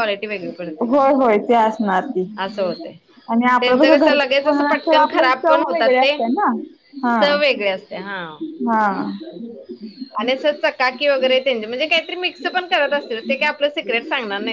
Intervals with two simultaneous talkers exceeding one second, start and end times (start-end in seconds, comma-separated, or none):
3.6-6.1